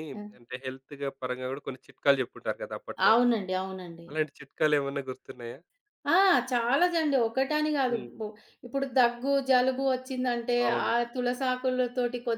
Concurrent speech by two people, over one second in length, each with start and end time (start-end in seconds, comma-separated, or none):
none